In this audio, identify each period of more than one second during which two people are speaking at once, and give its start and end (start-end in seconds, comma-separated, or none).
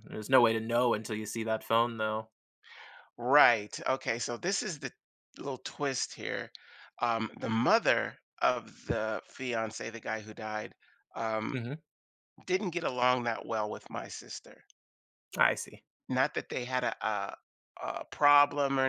none